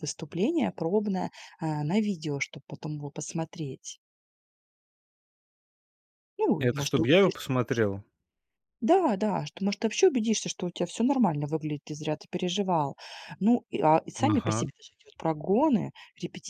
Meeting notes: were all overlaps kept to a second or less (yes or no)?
no